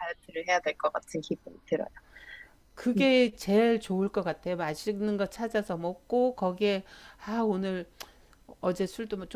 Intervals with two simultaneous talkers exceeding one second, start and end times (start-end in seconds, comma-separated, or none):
none